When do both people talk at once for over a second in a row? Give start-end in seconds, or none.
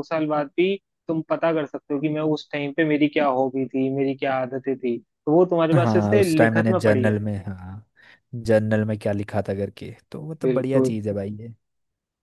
5.7-7.2